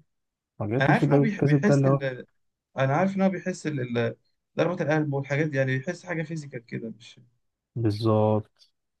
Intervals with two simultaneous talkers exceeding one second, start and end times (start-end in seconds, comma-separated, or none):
0.8-2.0